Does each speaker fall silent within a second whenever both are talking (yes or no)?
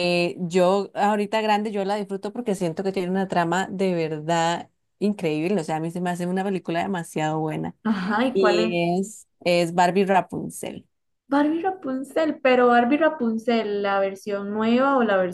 yes